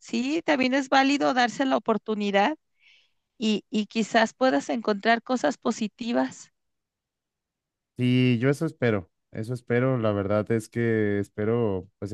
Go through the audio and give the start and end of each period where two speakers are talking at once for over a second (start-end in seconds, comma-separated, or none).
none